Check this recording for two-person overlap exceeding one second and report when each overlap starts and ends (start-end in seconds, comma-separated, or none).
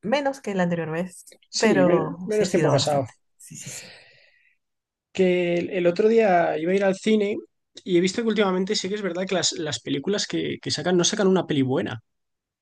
1.6-3.0